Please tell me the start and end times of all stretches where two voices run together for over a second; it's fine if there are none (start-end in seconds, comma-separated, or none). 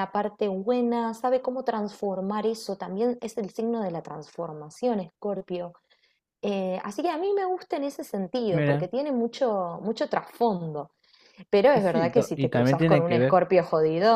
11.7-13.4